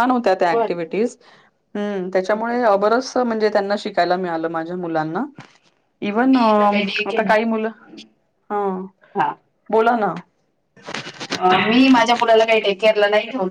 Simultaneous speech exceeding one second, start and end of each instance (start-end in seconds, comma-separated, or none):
6.0-7.3